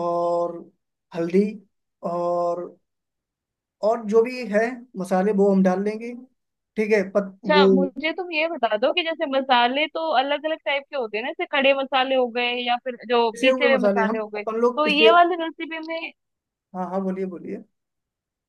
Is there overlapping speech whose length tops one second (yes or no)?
yes